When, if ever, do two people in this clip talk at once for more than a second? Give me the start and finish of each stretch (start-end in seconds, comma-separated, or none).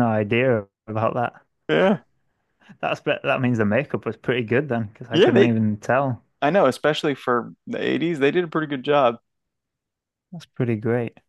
none